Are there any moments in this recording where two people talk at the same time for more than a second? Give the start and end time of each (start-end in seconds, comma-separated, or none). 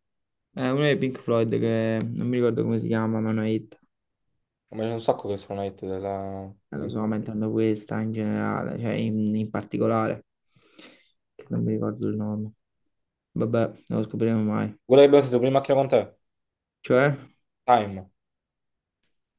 none